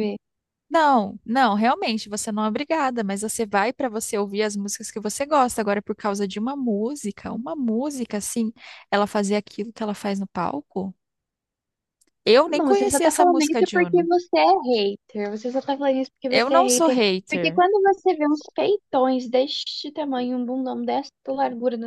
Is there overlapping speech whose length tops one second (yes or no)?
yes